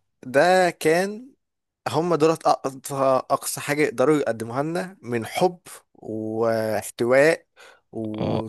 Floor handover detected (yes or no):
yes